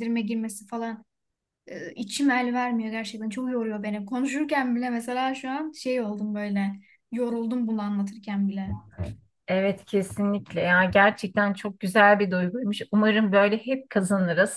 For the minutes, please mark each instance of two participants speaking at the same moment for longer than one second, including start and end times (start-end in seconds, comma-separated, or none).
none